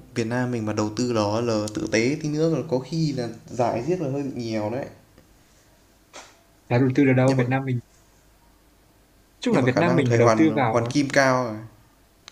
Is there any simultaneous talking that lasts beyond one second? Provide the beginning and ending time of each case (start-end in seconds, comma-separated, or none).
9.5-10.9